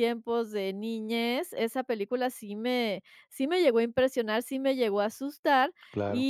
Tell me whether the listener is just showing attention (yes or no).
yes